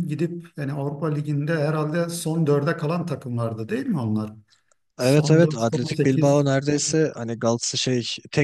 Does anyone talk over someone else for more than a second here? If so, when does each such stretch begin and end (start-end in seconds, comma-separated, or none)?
5.0-6.5